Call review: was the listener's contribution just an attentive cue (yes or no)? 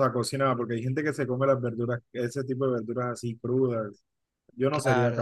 no